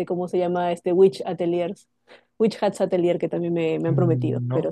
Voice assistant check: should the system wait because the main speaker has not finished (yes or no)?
no